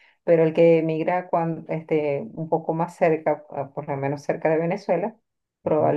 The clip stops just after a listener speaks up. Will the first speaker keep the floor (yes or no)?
yes